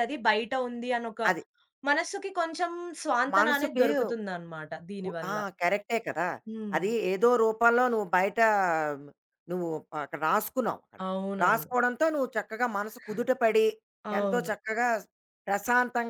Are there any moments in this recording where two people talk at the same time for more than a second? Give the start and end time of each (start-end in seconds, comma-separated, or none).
none